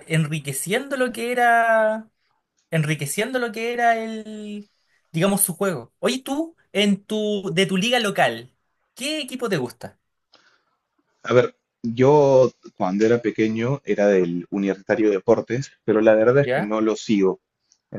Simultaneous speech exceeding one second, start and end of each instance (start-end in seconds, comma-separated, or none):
none